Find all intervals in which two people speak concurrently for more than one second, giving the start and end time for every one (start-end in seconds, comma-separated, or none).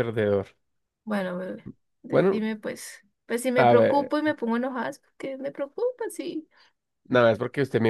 none